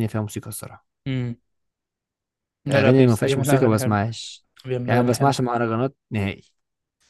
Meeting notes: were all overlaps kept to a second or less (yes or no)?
no